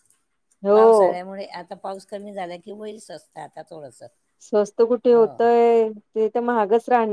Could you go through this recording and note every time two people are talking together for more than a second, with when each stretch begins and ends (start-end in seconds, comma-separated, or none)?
none